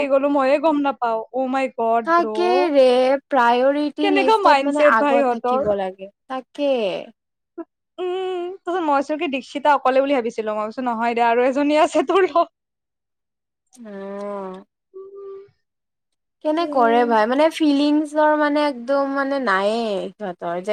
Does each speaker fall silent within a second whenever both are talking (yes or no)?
no